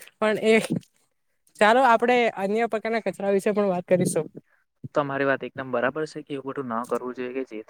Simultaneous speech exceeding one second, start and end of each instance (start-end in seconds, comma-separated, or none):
none